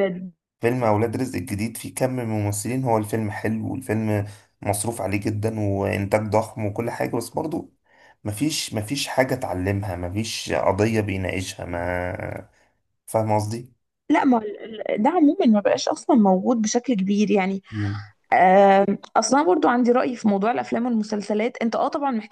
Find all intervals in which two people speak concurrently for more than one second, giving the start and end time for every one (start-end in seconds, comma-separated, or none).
none